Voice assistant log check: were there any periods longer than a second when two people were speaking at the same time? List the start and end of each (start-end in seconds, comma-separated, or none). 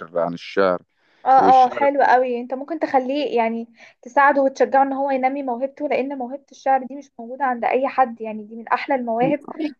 none